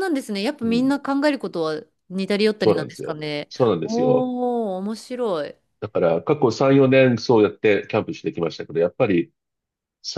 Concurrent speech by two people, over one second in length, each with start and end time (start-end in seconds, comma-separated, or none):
2.6-4.3